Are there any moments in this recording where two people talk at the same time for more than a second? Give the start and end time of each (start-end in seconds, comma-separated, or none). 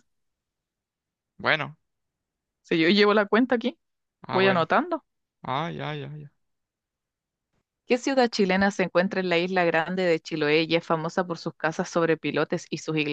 none